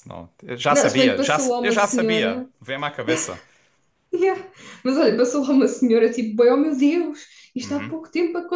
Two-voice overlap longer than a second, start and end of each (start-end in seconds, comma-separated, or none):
0.7-2.5